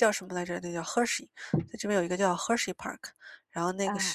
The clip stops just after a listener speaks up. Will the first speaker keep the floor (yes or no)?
yes